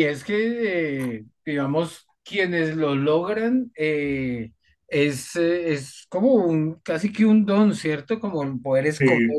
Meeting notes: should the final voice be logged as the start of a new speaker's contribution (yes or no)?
no